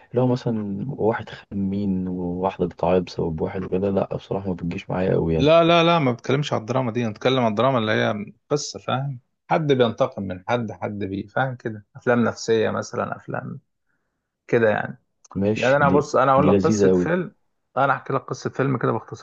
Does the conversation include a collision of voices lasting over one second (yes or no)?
yes